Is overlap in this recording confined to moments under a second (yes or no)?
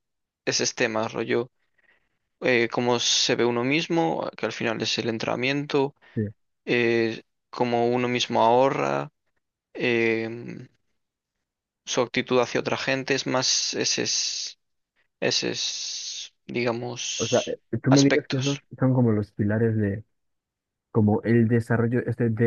no